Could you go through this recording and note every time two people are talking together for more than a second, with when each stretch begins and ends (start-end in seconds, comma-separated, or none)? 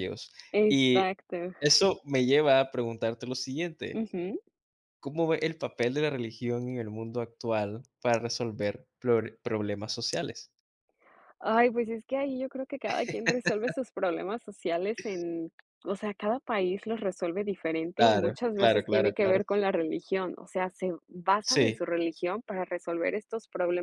17.9-19.4